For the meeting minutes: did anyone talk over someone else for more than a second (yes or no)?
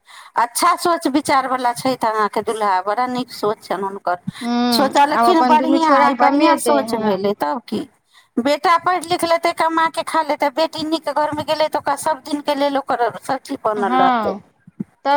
yes